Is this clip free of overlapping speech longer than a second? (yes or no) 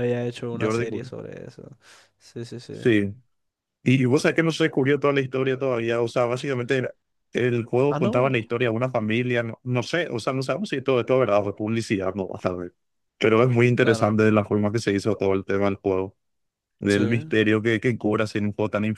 yes